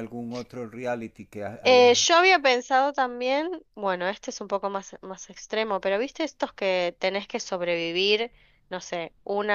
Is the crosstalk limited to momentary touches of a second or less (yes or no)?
yes